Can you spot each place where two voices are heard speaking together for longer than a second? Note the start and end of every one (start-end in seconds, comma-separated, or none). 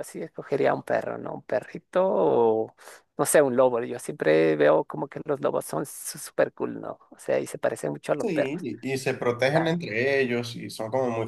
none